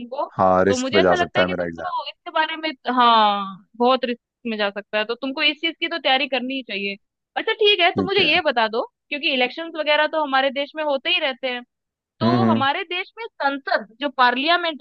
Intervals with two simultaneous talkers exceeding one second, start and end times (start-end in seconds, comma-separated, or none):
0.7-1.9